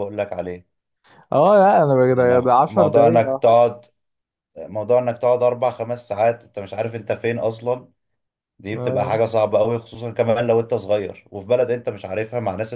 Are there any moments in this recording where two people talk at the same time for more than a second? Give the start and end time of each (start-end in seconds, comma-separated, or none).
2.0-3.6